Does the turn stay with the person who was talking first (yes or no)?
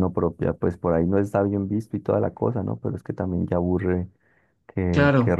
yes